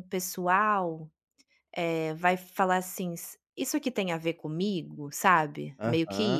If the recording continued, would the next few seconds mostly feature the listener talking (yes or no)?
yes